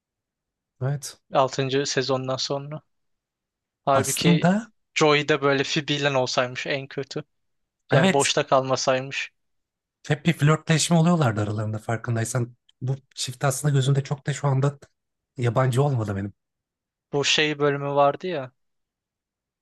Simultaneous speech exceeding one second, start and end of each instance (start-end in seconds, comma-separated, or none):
none